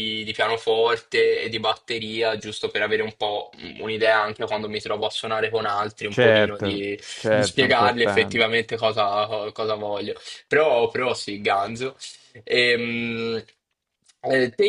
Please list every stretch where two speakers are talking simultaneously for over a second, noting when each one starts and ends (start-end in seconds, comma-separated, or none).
6.1-8.5